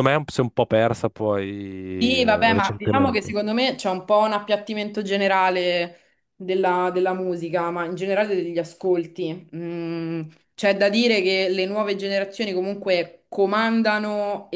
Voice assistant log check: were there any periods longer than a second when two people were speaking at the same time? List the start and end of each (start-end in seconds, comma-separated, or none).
2.0-3.4